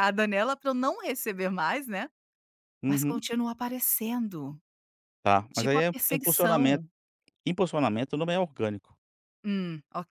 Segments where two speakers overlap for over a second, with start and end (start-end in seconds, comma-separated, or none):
5.5-6.8